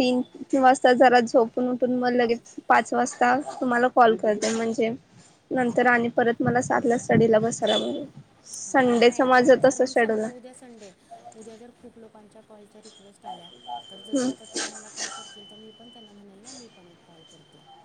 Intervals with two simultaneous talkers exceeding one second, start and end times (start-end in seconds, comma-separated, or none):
8.7-10.3